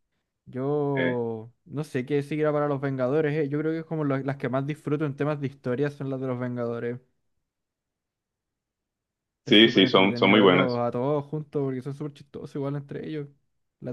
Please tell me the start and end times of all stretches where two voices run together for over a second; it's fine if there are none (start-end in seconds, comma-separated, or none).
9.4-10.8